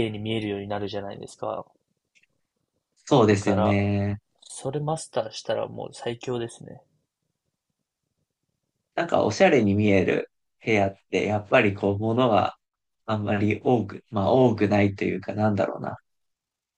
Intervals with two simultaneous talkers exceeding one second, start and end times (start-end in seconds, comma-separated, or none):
none